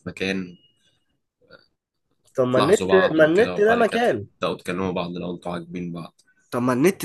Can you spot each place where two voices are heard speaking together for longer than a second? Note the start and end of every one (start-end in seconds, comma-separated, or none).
2.5-4.0